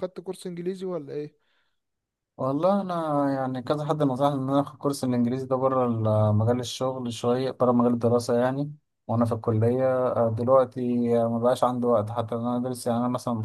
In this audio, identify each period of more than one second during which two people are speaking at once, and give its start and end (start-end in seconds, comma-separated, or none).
none